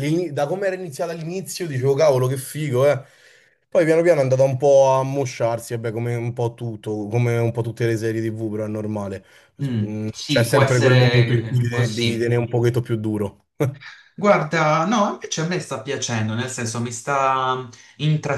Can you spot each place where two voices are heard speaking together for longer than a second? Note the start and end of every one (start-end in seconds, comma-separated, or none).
9.8-12.3